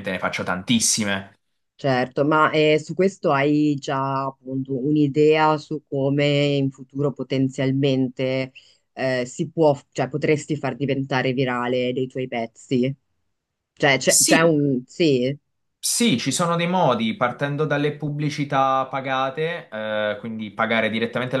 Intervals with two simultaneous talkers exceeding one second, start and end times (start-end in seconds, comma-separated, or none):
none